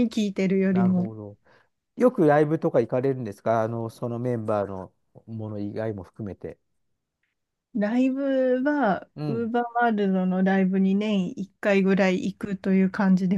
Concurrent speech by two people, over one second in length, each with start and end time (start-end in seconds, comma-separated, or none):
none